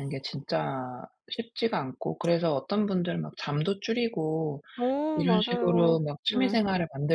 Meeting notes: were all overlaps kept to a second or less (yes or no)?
no